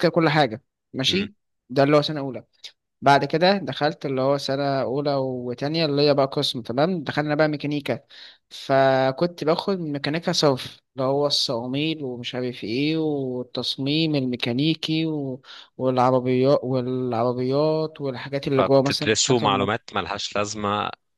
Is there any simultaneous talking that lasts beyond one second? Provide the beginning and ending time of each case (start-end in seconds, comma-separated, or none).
18.6-19.8